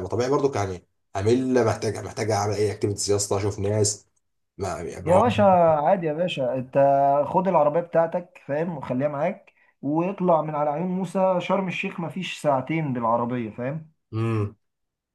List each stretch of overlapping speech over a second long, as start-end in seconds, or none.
none